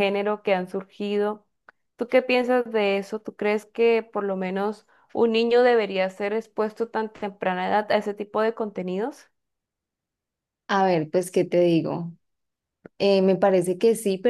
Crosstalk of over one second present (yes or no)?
no